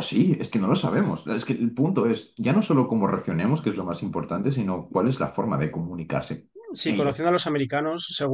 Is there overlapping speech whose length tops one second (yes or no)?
no